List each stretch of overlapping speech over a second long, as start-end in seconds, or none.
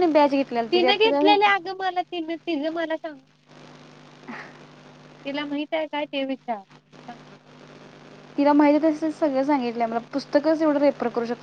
none